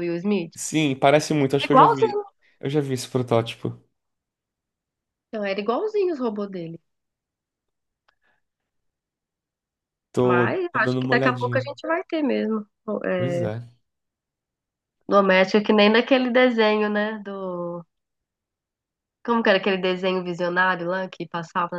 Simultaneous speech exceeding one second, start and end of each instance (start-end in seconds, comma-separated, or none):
10.2-11.7